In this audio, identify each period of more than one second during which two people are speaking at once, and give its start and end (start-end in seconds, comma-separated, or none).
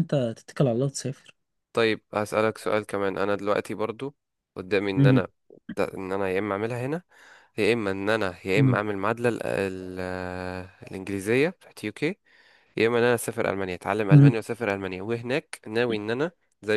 none